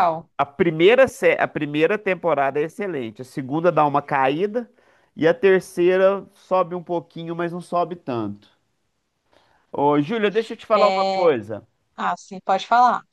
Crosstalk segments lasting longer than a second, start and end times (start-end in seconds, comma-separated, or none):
none